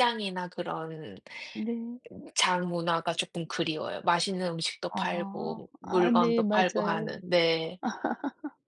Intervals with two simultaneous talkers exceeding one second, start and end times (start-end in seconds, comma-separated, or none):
4.9-7.2